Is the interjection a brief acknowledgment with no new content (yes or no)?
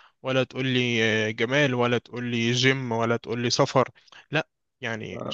no